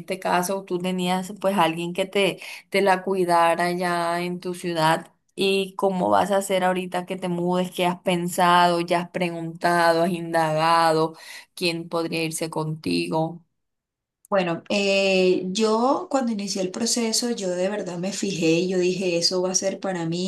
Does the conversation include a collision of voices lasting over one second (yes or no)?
no